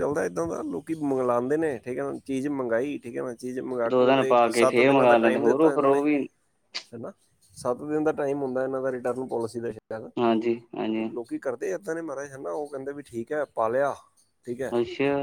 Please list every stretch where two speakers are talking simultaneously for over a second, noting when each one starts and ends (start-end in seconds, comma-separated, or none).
3.9-6.0